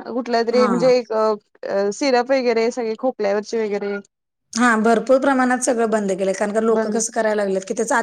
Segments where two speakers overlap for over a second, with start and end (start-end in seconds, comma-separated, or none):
none